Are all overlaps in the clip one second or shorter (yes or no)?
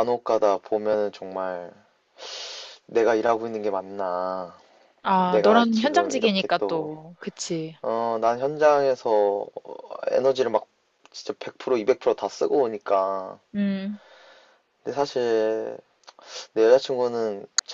no